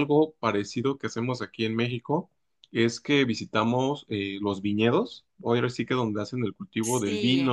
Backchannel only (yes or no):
yes